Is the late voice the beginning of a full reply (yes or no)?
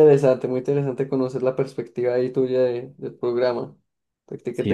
yes